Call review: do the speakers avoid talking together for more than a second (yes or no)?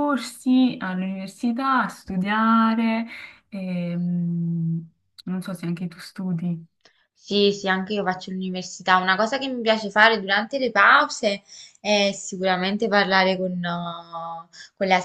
yes